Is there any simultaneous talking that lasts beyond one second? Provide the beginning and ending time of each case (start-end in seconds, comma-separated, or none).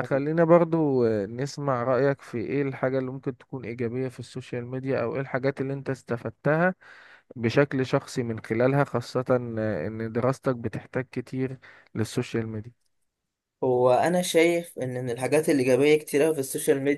none